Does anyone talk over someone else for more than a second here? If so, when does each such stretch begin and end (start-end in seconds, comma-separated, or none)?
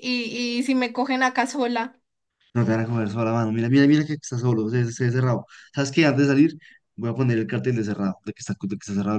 none